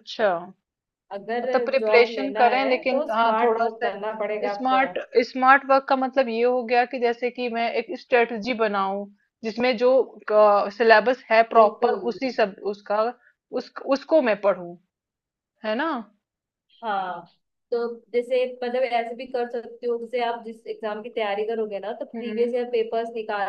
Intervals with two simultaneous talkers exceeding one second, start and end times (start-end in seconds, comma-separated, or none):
1.4-3.9